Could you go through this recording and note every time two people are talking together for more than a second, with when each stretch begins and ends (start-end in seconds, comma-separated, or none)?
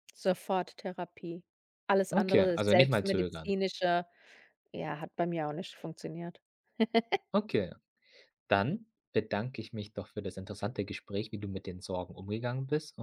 2.1-3.5